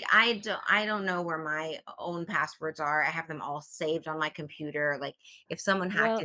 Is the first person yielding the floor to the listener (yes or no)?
no